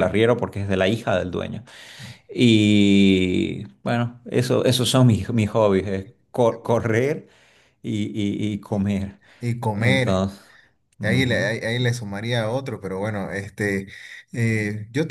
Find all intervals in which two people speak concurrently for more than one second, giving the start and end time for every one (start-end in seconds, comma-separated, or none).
none